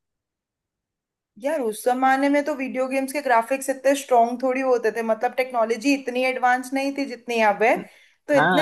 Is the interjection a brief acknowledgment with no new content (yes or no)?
no